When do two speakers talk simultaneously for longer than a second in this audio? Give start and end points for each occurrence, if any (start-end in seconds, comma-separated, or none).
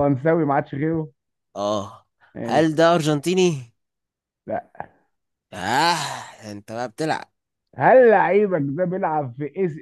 none